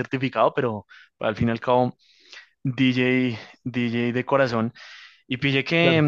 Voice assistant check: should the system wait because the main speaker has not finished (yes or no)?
yes